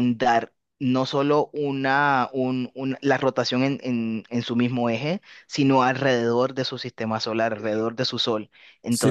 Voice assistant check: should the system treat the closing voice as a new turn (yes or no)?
yes